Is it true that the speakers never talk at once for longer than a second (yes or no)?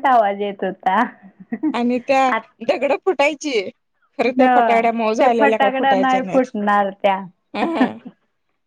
no